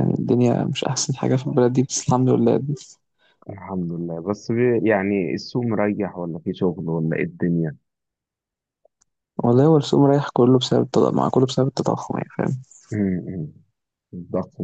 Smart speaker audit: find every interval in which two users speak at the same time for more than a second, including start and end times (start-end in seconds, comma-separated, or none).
none